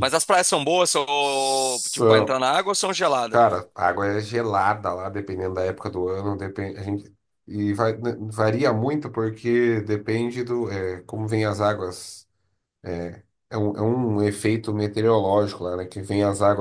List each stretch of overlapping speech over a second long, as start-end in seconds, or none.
1.2-2.4